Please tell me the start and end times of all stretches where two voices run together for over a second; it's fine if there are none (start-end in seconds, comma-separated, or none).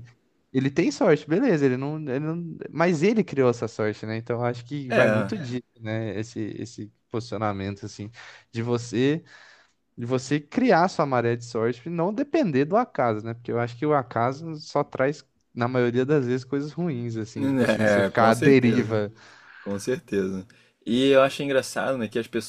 17.4-19.0